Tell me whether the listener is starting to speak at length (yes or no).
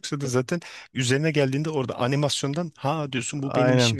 yes